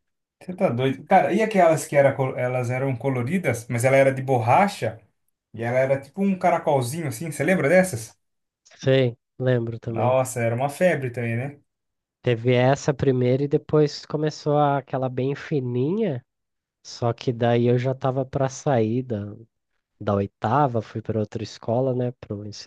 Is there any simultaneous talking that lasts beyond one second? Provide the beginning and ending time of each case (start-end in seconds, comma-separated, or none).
none